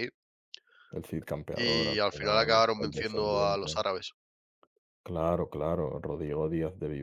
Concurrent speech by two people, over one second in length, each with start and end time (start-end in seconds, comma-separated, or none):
1.5-3.8